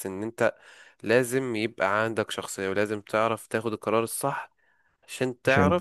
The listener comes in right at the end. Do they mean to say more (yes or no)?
no